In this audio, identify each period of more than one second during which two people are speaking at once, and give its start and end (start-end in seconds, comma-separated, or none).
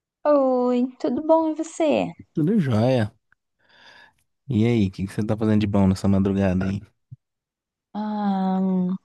none